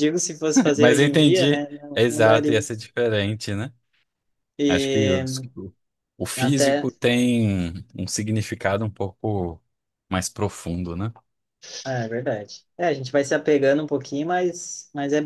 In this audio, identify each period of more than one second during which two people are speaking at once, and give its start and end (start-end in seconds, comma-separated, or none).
0.8-2.7